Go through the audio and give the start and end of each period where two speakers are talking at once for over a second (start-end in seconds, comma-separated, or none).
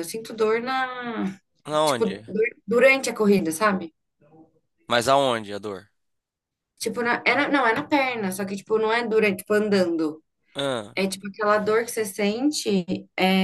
none